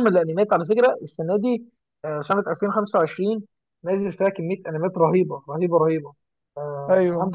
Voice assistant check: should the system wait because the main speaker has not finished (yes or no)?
yes